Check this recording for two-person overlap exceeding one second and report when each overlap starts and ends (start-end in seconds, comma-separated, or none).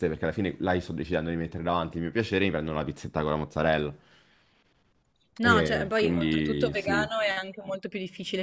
5.4-7.1